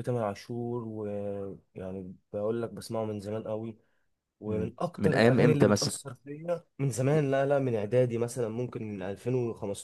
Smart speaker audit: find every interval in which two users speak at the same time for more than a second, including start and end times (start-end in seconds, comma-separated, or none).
4.5-6.0